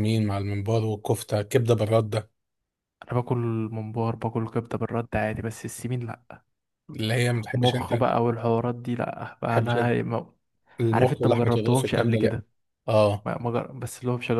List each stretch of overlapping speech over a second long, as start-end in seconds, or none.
10.9-12.4